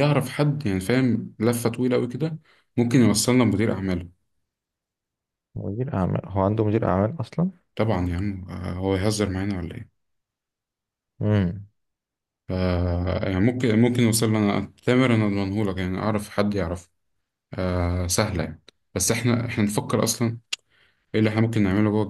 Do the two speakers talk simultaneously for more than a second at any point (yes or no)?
no